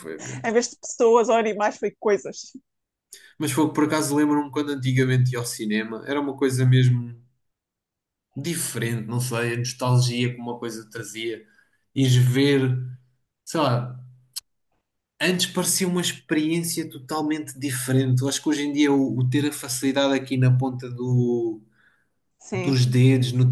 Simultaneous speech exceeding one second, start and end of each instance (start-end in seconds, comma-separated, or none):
none